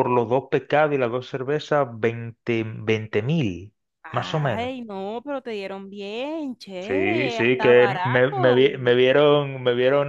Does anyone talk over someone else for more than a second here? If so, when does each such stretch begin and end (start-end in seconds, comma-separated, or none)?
6.8-8.7